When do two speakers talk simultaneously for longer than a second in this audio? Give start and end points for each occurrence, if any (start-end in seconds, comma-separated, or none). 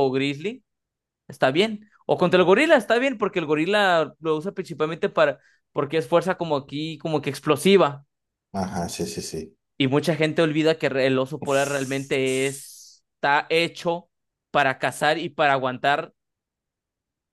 11.4-12.7